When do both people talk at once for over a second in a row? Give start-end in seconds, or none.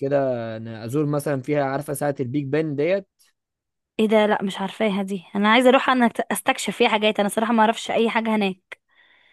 none